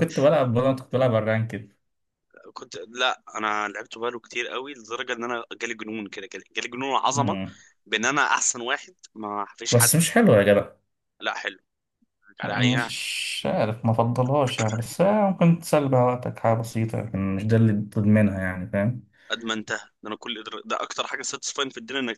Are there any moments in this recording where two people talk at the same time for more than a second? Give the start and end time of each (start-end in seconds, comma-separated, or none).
none